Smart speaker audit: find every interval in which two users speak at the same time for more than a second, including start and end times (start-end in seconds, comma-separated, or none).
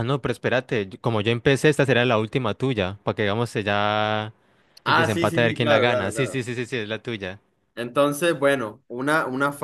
4.8-6.4